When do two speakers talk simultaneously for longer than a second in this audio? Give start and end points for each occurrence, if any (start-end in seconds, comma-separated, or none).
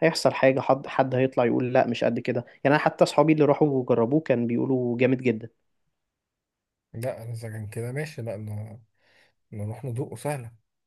none